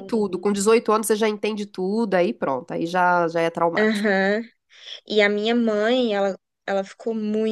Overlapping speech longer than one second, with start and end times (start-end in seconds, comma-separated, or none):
none